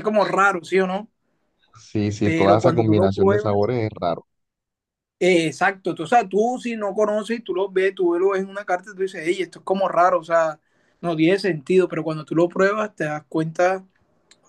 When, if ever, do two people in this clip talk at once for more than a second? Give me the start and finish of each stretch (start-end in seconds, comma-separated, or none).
2.2-3.7